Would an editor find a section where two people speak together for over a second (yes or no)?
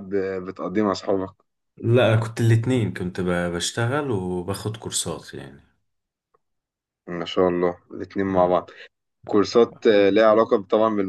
no